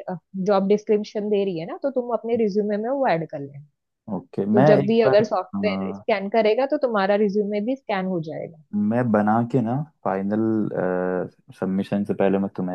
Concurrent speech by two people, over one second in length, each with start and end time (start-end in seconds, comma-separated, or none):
4.5-6.0